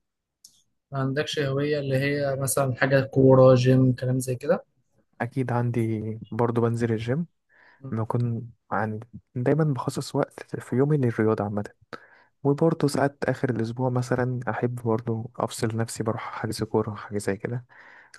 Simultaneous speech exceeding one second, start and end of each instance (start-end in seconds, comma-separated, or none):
none